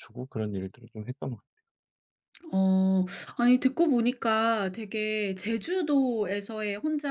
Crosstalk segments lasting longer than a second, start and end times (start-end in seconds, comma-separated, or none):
none